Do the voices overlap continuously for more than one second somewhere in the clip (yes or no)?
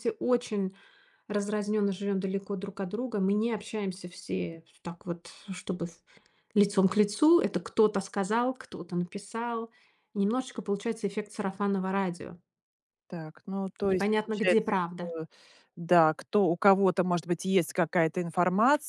yes